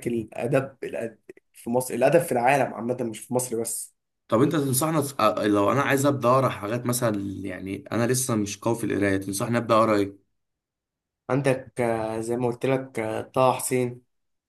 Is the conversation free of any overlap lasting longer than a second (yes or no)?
yes